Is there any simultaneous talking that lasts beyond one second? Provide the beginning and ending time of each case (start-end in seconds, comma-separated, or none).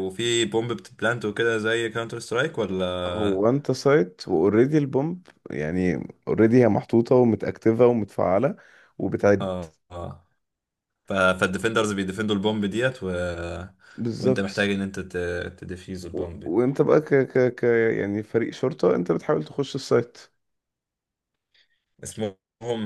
none